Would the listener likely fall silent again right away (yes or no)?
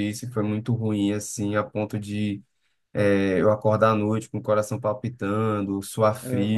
yes